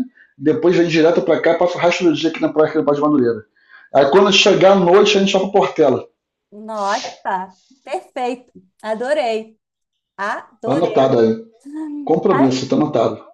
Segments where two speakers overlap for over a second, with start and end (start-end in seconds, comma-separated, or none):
none